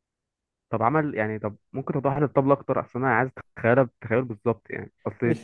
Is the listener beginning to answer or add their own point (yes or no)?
no